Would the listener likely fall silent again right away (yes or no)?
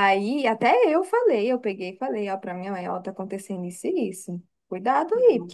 yes